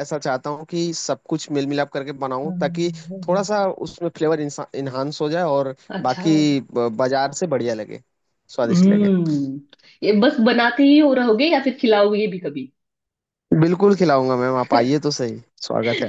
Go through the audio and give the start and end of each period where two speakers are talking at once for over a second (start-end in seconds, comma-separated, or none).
none